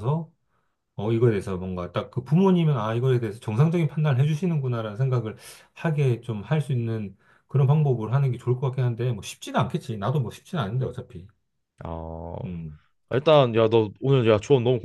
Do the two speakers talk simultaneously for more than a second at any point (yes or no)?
no